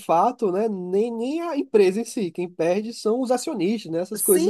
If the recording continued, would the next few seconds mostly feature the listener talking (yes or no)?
yes